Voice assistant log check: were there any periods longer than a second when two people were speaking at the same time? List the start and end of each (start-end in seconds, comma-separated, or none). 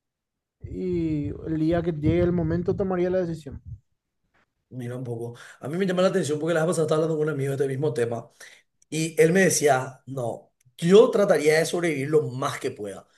none